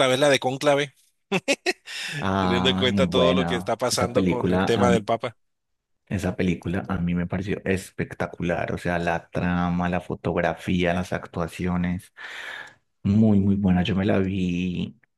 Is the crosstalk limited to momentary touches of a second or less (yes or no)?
no